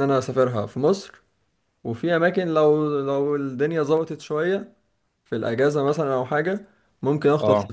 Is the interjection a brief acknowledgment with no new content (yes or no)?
yes